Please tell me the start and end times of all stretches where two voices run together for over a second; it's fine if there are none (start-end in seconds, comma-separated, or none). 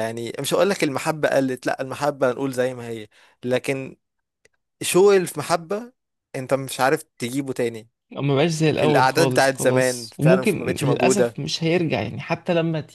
8.8-11.4